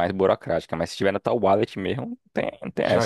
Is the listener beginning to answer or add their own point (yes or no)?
yes